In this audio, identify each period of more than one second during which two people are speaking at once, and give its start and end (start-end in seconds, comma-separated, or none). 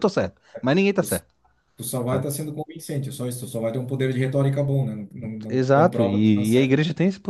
5.5-6.8